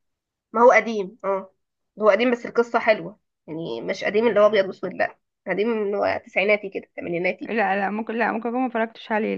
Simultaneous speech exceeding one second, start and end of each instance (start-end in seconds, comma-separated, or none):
none